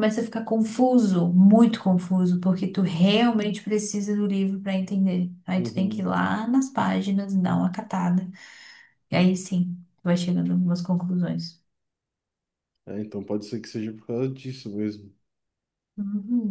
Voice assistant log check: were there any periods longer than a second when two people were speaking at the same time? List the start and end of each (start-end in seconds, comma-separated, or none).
none